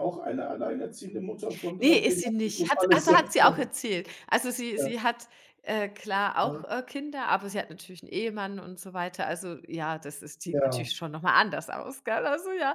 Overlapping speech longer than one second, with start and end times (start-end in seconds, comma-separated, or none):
1.8-3.7